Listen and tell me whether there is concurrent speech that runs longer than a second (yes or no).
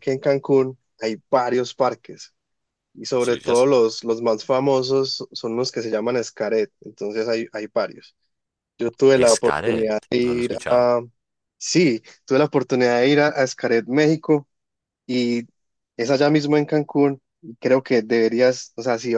yes